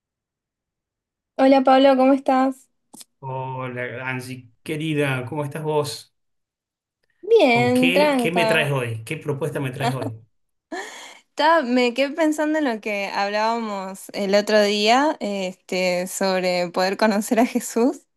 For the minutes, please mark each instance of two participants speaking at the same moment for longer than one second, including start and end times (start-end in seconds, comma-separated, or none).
7.5-8.7